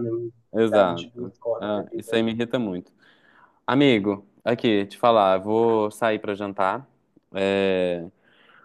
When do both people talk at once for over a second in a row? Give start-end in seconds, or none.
0.7-2.1